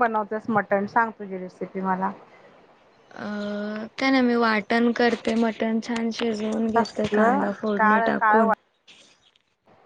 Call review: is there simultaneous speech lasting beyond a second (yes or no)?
yes